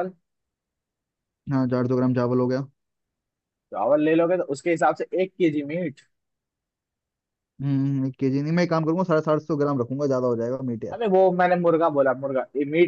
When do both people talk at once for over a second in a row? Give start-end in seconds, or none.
none